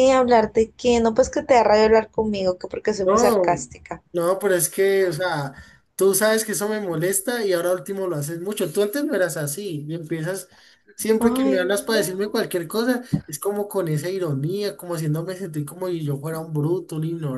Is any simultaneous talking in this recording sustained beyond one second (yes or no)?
yes